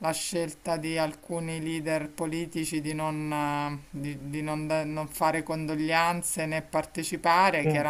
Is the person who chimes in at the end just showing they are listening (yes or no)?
yes